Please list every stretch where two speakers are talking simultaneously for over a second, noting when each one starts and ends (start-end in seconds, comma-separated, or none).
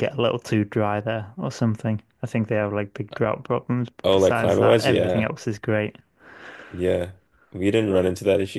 4.0-5.3